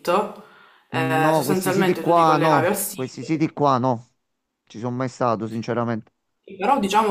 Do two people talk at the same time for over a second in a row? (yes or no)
yes